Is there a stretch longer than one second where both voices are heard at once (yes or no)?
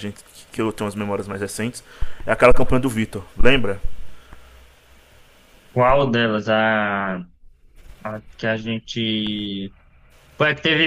no